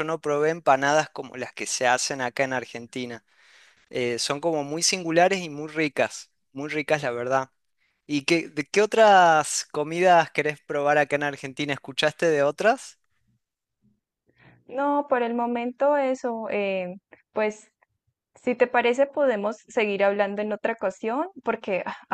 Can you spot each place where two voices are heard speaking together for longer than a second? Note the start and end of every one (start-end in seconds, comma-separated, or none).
none